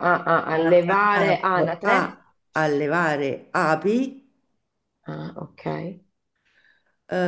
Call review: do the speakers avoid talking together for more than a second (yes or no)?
no